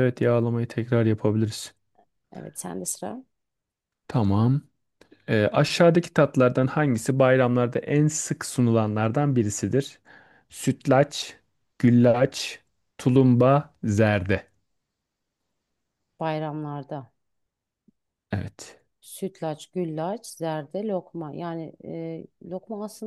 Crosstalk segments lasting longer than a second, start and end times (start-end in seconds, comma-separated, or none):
none